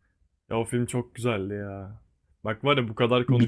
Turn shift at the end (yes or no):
no